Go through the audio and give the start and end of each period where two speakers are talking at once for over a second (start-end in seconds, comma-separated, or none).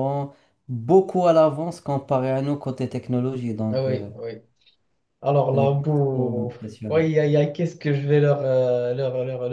5.5-7.1